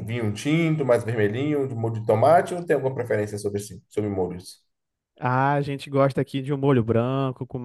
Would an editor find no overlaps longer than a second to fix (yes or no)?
yes